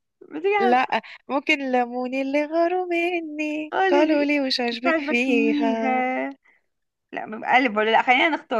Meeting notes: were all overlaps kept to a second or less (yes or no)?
no